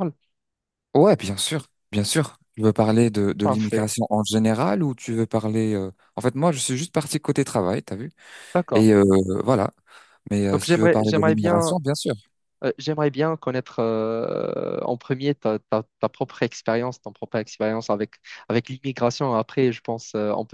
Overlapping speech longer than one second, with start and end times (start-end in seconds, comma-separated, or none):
10.5-11.8